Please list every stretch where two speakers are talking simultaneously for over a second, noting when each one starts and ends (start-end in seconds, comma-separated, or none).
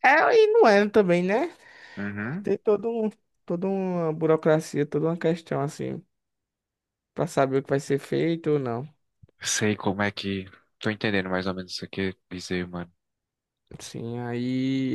none